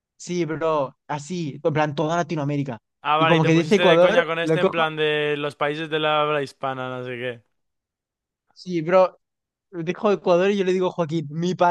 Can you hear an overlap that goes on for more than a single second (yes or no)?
yes